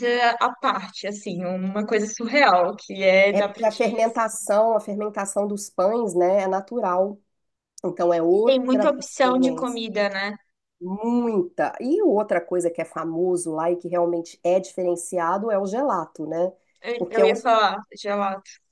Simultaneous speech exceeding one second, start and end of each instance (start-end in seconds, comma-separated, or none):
8.3-9.8